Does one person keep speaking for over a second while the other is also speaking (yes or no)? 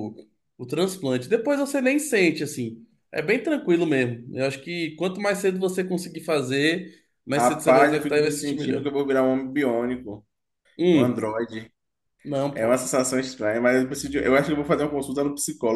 yes